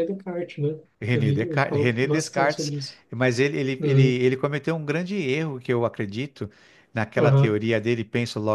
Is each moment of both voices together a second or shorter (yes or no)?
no